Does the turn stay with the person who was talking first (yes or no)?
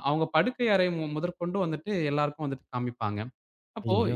yes